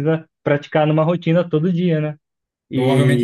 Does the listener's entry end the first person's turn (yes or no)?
yes